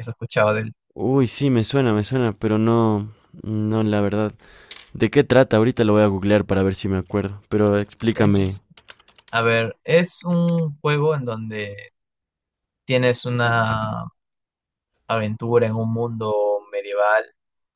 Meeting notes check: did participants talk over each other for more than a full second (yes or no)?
no